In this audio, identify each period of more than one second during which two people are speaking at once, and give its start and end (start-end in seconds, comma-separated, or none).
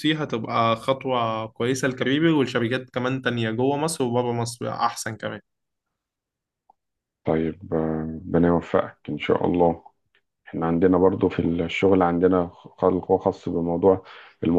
none